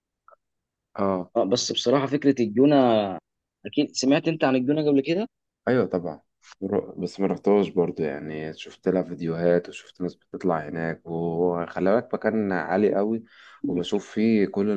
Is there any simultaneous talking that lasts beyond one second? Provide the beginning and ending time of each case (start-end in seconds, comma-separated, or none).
none